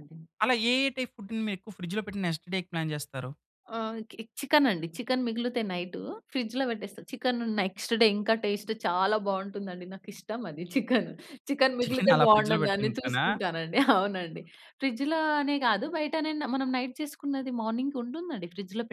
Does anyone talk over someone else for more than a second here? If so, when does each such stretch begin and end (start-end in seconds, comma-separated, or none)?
11.8-13.2